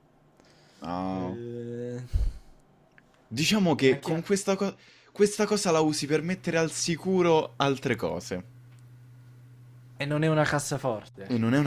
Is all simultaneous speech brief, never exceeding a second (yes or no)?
yes